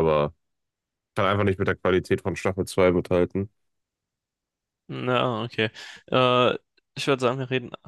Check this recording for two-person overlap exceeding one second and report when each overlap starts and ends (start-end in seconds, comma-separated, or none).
none